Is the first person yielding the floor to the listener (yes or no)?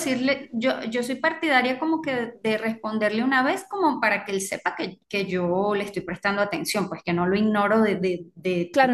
yes